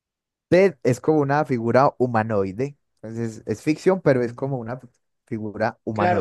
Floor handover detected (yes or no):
yes